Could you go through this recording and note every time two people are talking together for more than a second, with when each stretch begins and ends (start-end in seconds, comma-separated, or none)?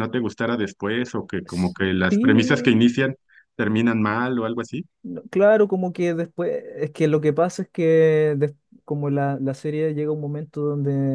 1.4-2.9